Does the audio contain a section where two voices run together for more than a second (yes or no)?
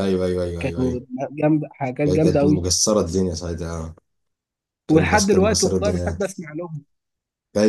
yes